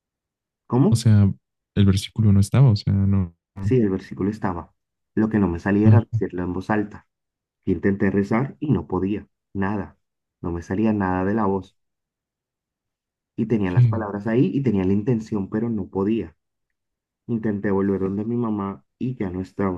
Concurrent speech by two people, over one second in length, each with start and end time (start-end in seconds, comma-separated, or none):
none